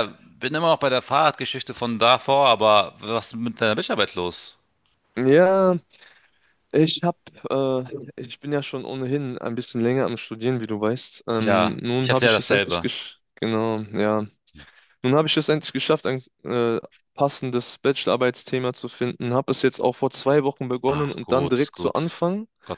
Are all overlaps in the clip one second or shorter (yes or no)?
no